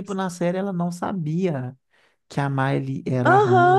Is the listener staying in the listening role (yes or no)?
no